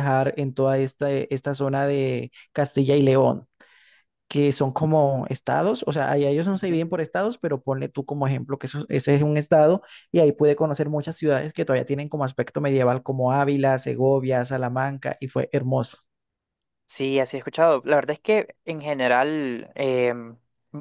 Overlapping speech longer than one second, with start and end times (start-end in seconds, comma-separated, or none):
none